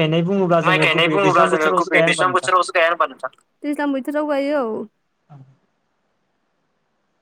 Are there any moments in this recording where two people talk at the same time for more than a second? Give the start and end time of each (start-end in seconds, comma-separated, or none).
0.7-2.5